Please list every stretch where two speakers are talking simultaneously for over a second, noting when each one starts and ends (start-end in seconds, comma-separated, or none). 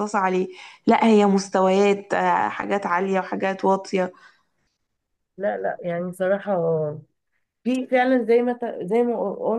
none